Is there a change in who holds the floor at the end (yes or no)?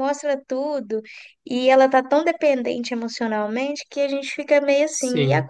no